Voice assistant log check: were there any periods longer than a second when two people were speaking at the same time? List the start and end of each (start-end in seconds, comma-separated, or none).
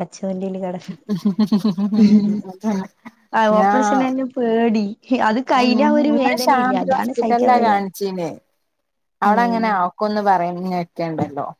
5.7-7.9